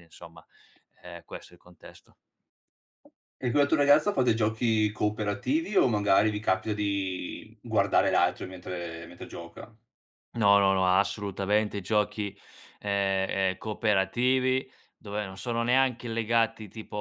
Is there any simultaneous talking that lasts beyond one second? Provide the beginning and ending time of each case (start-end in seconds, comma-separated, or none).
none